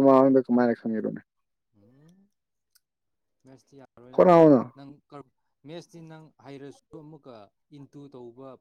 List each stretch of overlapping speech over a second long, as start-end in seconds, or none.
none